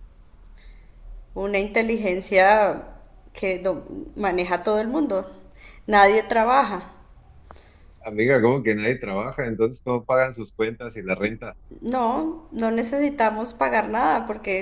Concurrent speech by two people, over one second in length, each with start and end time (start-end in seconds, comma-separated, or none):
none